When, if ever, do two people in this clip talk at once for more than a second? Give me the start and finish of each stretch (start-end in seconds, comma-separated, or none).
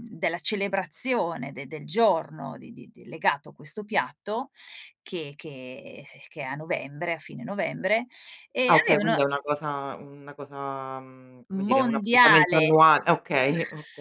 11.5-12.7